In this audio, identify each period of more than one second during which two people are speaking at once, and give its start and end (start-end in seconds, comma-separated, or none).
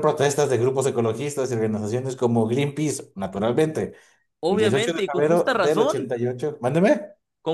4.5-6.1